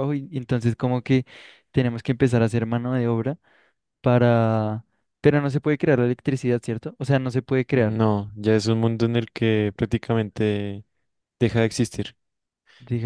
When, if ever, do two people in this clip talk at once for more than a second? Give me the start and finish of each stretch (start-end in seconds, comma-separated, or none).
none